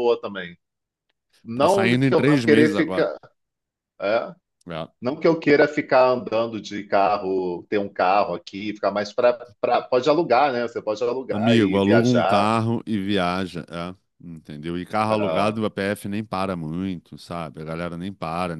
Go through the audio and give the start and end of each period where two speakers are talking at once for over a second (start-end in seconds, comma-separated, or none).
1.5-3.1, 11.3-12.5